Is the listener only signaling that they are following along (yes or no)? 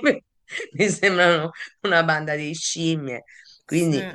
yes